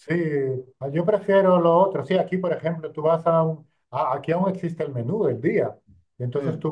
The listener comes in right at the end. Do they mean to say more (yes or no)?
no